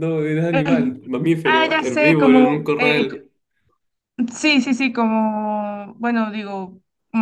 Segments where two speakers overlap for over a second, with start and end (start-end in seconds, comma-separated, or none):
1.4-3.0